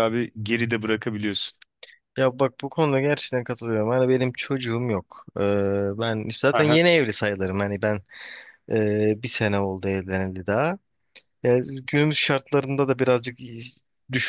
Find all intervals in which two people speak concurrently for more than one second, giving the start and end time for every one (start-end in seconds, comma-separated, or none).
none